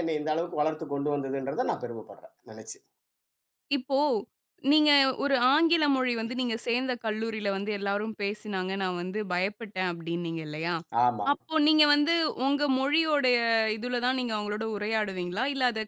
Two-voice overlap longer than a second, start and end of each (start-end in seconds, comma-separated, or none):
none